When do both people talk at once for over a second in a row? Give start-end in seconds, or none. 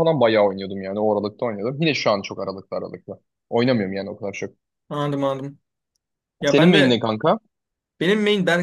none